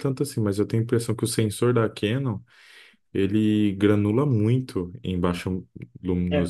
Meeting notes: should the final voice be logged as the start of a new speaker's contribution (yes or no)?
yes